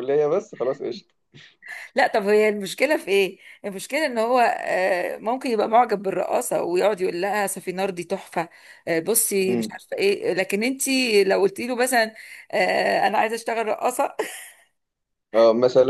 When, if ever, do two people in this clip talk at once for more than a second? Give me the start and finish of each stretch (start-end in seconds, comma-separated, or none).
none